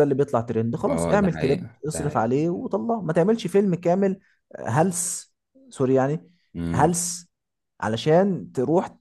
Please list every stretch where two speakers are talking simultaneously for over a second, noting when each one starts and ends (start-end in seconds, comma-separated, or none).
0.9-2.3